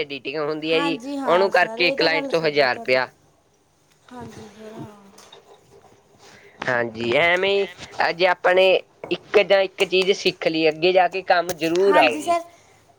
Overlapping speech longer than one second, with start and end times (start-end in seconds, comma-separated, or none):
0.7-3.0